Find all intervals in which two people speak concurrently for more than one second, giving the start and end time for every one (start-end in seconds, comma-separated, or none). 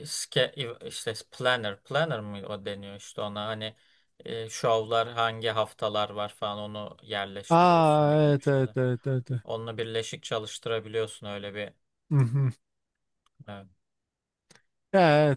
7.5-8.8